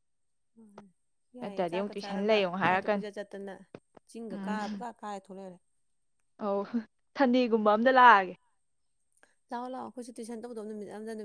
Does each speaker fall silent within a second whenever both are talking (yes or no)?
no